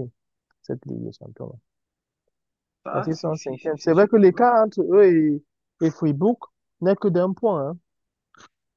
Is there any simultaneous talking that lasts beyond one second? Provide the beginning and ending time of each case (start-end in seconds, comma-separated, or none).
2.9-4.5